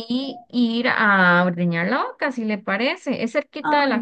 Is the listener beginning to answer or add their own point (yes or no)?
no